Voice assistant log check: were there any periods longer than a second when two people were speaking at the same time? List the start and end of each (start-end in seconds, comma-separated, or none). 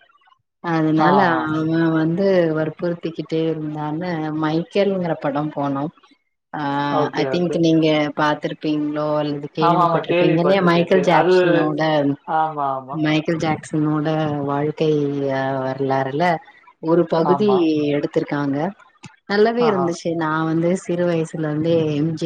9.7-11.3